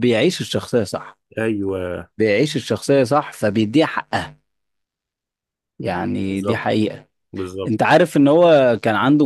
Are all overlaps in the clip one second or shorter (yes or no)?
yes